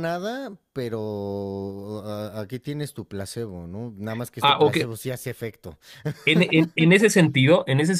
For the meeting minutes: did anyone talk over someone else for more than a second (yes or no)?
no